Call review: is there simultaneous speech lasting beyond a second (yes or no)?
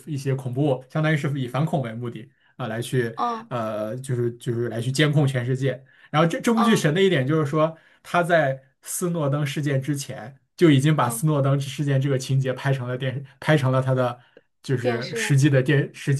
no